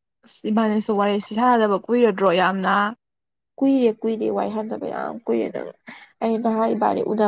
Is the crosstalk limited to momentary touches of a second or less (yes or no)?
yes